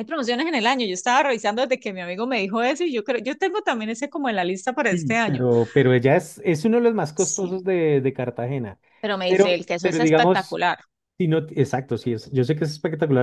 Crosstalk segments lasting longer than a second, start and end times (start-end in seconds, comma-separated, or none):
9.3-10.6